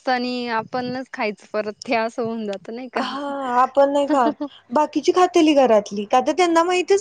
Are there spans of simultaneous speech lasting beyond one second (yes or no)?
yes